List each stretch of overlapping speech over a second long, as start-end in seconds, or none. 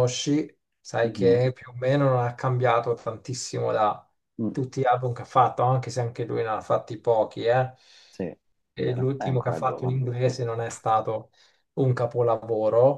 8.8-10.0